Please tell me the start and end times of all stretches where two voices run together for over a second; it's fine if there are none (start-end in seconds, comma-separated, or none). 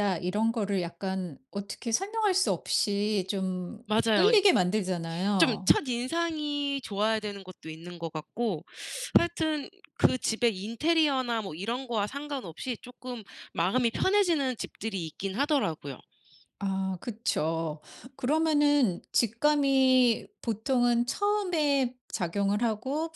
none